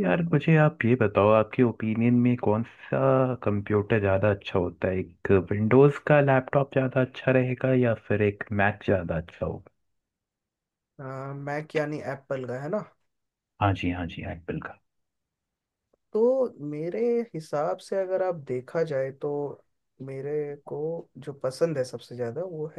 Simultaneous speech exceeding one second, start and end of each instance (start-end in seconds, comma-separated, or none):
none